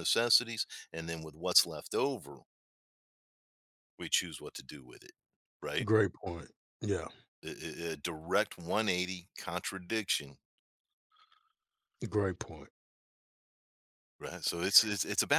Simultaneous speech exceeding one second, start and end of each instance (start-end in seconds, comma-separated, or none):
none